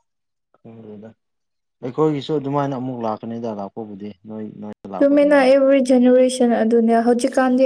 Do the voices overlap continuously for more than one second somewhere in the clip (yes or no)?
no